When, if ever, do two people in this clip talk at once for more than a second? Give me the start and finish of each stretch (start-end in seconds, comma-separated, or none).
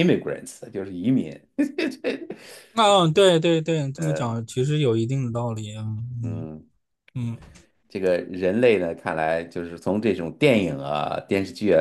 none